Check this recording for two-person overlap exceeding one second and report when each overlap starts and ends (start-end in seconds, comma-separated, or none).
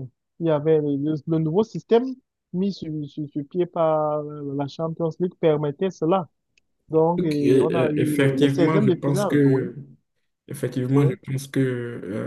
7.2-9.7